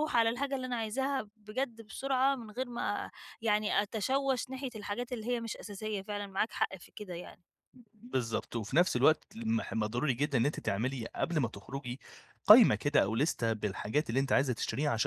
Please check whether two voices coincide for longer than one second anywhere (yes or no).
no